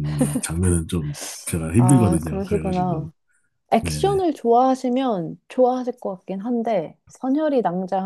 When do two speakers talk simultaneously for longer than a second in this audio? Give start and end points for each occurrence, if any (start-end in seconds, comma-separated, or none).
1.8-3.1